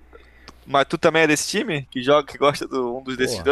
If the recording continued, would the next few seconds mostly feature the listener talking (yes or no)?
yes